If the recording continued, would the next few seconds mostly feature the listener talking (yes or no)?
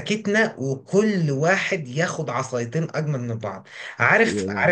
no